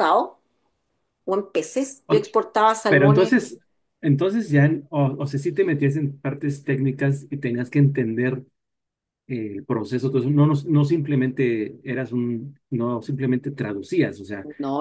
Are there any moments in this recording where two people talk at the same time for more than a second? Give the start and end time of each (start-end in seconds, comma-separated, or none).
none